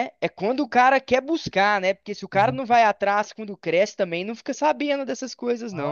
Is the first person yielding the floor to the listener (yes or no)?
yes